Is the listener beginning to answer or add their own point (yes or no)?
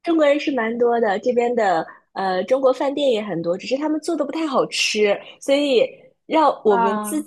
no